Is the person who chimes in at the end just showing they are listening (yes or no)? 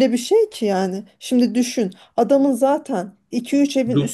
yes